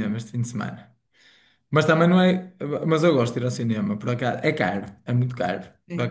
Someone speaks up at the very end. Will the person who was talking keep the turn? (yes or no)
yes